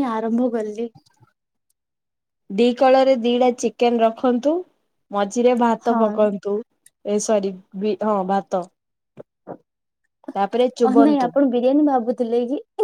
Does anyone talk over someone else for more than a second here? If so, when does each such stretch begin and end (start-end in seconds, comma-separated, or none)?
none